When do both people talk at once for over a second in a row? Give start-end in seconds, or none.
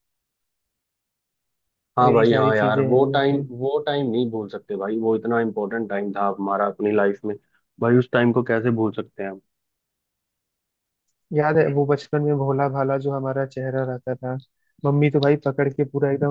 2.0-3.4